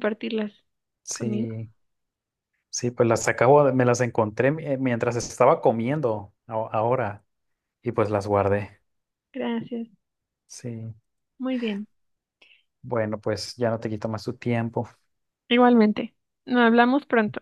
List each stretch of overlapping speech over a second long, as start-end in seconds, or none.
none